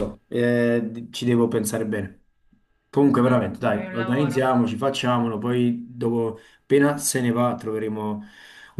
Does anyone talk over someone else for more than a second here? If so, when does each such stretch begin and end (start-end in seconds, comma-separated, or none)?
3.0-4.5